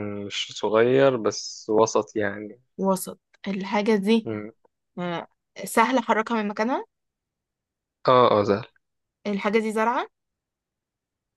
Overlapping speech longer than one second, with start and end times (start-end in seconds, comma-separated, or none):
none